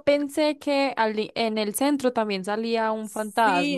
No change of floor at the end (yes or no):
no